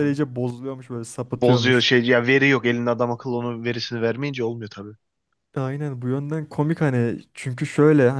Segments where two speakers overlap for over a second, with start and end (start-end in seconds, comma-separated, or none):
none